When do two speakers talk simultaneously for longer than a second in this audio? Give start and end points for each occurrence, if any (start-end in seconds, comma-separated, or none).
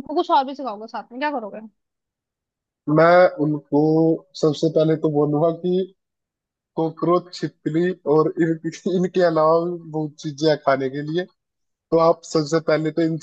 none